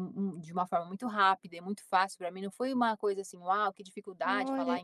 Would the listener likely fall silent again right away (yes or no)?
no